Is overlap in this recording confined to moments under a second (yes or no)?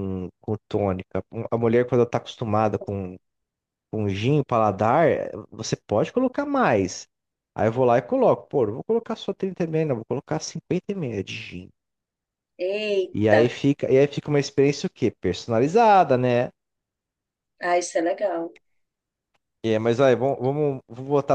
yes